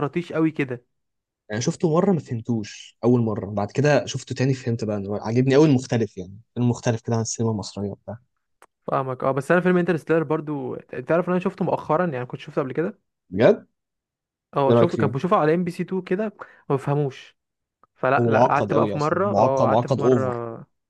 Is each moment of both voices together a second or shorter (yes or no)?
no